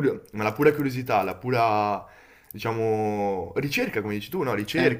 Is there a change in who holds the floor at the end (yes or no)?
no